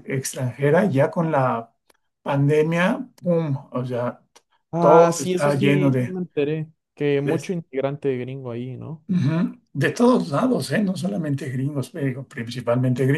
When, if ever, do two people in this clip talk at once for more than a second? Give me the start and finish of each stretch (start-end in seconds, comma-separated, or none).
4.8-6.2